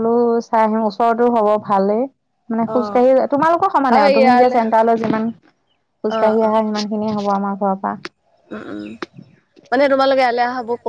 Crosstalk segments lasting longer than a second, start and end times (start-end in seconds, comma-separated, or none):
none